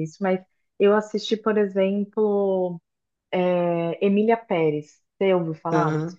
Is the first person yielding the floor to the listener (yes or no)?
yes